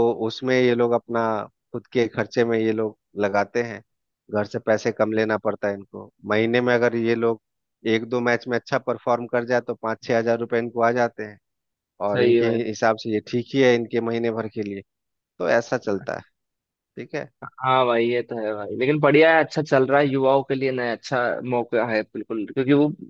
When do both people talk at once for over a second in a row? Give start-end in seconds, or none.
none